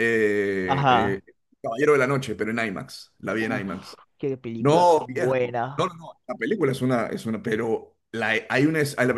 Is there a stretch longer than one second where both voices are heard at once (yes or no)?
yes